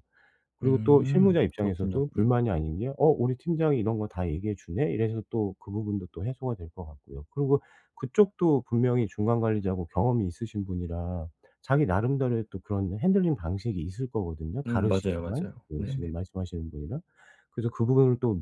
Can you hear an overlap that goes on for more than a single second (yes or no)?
yes